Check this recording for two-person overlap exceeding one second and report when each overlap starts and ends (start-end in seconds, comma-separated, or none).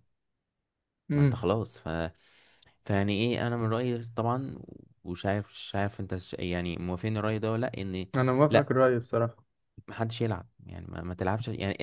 none